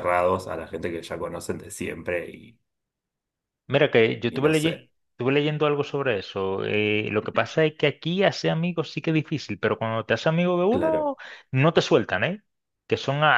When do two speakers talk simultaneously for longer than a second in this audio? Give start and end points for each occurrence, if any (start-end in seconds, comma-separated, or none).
none